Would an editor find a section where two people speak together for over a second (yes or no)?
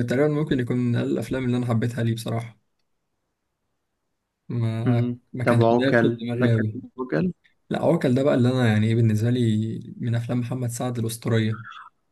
yes